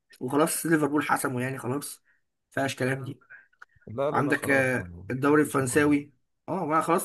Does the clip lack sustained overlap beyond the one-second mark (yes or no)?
no